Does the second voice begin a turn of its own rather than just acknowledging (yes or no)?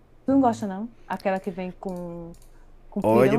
yes